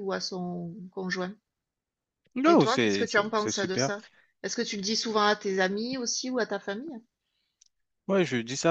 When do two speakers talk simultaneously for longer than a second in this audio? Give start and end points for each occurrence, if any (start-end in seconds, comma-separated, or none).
2.5-3.9